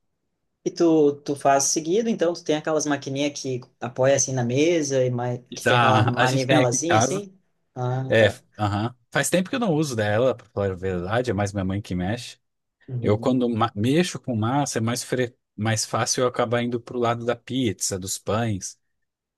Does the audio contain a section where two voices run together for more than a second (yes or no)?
yes